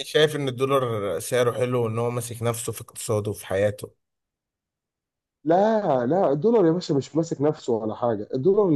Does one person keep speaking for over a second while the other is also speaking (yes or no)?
no